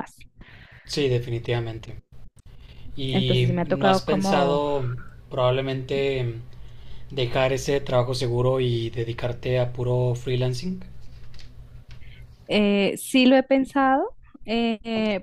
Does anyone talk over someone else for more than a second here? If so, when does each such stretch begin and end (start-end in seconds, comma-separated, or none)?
3.1-4.6